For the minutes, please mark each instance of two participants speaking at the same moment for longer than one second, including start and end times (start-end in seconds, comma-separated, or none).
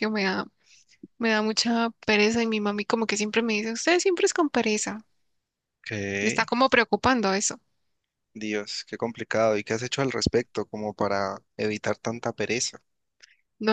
none